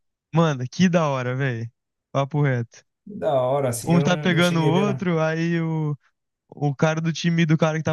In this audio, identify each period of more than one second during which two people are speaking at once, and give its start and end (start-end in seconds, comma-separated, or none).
3.9-5.1